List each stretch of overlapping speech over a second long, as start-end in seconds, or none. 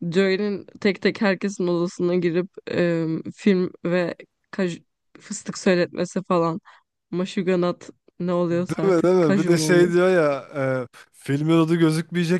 8.5-9.9